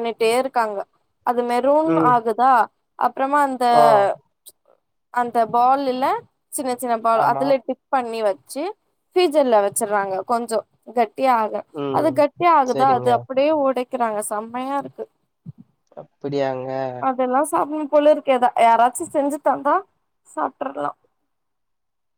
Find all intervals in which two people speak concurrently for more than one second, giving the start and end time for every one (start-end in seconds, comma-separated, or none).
none